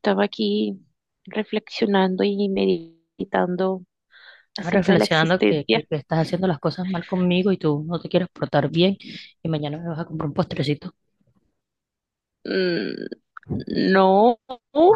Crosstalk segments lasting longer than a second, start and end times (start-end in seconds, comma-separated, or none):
4.5-5.9